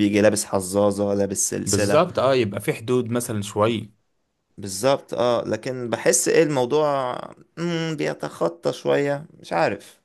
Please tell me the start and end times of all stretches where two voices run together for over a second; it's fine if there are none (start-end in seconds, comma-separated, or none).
none